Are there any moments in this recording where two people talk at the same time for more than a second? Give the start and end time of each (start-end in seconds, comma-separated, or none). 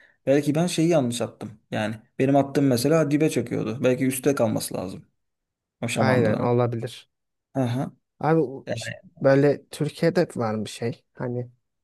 none